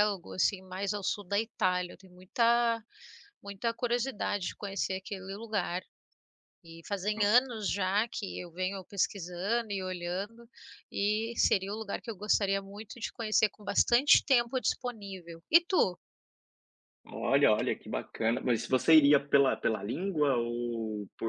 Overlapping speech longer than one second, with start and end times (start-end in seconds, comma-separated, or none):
none